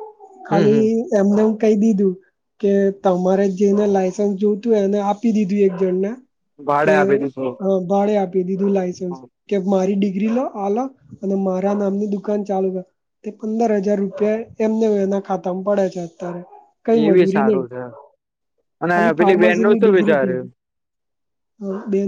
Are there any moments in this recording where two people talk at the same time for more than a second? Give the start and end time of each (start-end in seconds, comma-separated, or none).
18.9-20.5